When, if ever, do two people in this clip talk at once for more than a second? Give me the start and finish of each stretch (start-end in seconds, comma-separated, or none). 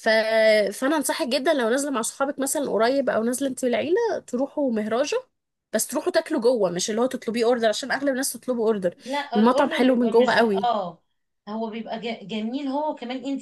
9.3-10.7